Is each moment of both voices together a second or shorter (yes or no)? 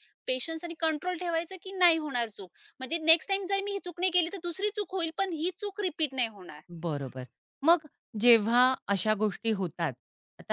yes